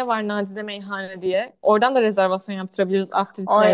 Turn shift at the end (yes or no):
yes